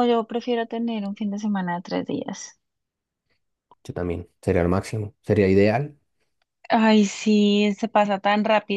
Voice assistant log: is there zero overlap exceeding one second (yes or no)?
yes